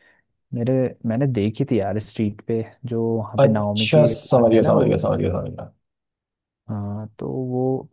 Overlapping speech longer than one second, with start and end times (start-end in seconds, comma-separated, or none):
3.4-5.0